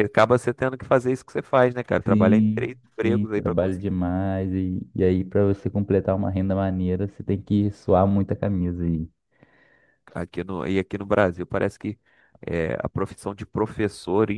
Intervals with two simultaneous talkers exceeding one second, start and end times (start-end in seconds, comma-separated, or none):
2.0-3.9